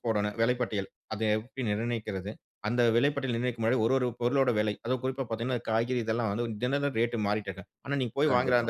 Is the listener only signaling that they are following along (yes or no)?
yes